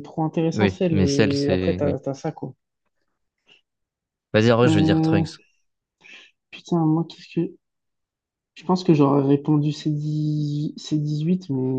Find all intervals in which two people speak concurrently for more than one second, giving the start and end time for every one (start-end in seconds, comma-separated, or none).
0.5-2.0